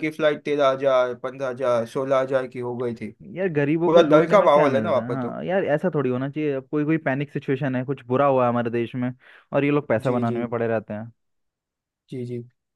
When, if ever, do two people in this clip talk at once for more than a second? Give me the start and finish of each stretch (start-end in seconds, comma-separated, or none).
3.9-5.4